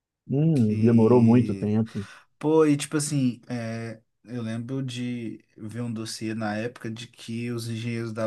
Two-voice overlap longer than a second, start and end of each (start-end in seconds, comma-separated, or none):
0.5-1.8